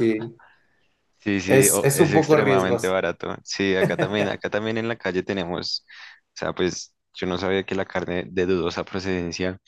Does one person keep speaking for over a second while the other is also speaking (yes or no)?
yes